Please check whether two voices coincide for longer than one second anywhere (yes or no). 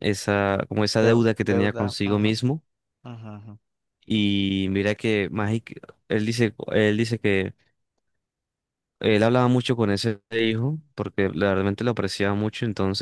yes